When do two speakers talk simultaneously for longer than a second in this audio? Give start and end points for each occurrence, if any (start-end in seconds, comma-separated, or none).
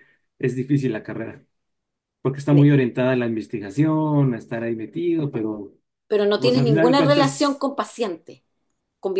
6.3-7.6